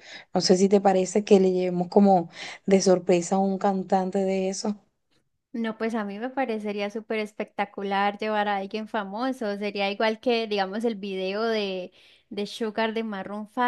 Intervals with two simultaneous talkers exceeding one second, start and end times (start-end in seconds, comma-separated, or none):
none